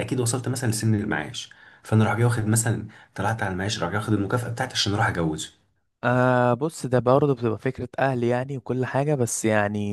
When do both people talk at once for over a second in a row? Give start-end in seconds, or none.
none